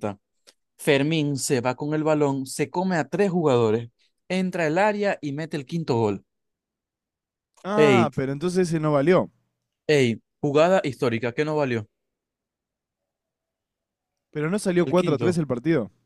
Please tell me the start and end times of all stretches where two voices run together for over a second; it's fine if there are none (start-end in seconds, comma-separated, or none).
none